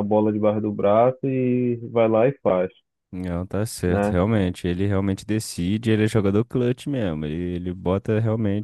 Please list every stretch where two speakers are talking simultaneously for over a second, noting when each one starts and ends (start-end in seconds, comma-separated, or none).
none